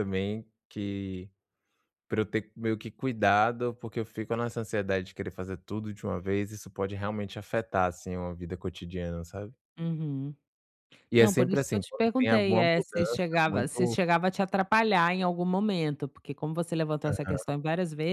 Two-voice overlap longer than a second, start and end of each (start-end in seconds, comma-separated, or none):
11.2-14.0